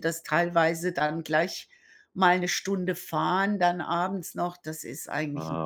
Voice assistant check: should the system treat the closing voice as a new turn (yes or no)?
yes